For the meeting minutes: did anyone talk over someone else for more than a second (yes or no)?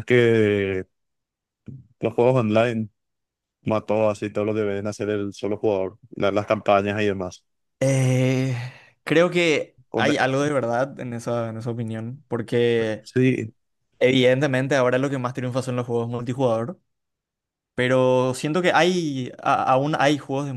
no